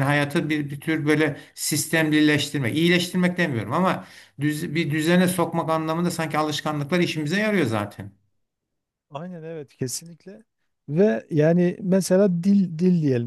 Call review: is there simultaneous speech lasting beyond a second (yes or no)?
no